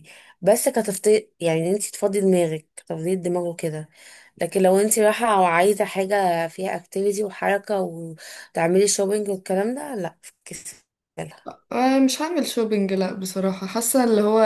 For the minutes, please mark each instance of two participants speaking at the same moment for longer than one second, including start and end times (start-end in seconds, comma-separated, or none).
none